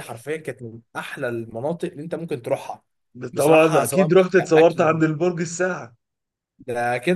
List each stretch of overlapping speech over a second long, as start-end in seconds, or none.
3.4-5.0